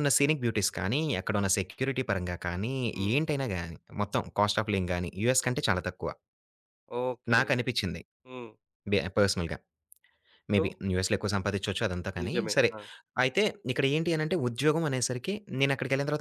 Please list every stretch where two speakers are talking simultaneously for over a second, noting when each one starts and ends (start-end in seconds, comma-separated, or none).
none